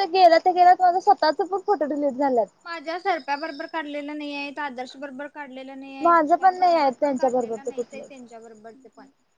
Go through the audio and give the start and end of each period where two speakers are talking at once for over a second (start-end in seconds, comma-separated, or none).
6.0-8.0